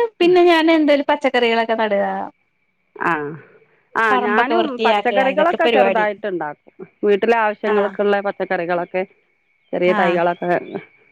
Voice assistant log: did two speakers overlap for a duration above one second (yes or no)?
yes